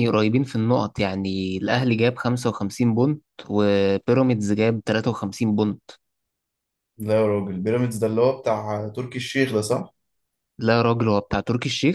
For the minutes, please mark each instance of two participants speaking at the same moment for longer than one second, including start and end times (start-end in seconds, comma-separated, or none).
none